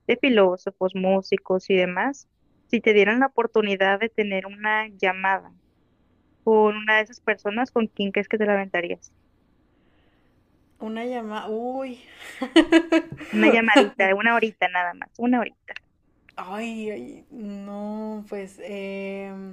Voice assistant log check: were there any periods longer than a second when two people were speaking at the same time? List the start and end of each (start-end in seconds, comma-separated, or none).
none